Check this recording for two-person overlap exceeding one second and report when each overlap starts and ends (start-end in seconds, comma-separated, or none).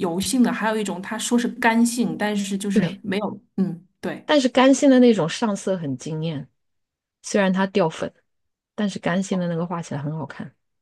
none